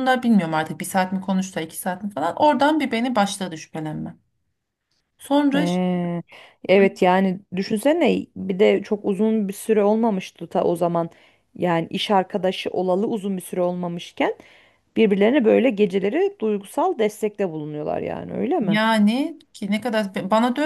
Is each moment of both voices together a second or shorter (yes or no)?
yes